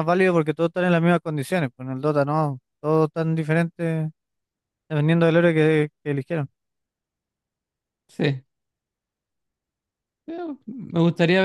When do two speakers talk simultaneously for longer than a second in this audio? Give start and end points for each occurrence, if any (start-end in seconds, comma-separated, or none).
none